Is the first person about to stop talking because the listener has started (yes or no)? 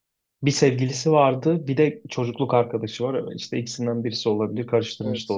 yes